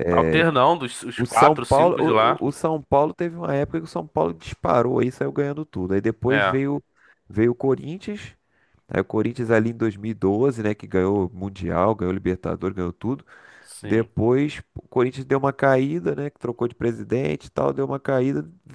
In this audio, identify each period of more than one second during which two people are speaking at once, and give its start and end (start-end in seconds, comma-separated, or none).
1.2-2.4